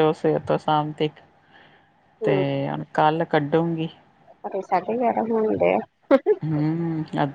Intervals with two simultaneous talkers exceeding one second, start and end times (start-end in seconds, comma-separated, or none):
none